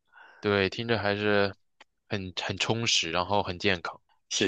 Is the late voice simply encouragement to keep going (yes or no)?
no